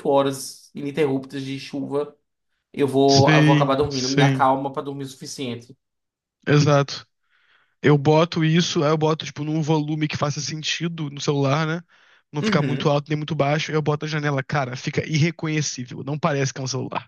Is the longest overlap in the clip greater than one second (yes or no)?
yes